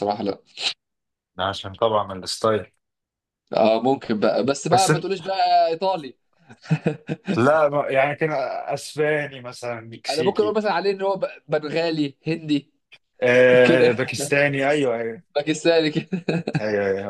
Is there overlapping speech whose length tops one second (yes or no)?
no